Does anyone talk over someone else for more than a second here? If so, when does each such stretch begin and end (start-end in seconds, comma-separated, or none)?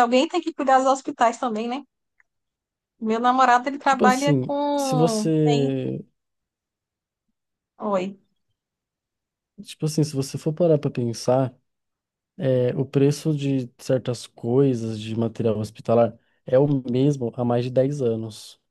3.8-5.7